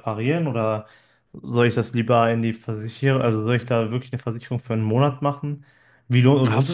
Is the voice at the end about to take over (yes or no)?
no